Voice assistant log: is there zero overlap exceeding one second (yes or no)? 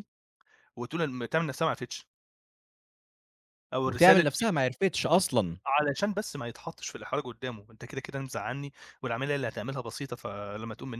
yes